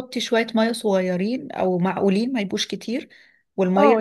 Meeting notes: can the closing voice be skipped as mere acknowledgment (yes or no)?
no